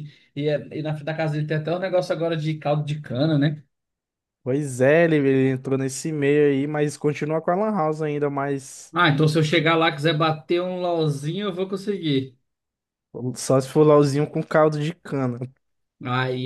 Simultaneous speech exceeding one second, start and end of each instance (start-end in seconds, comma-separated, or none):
none